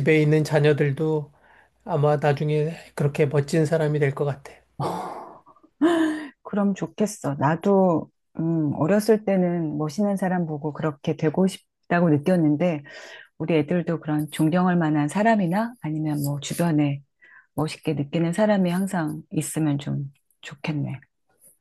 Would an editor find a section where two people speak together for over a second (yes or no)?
no